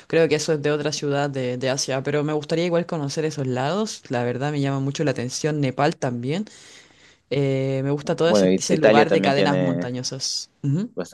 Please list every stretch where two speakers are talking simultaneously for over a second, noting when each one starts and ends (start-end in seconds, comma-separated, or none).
8.0-10.0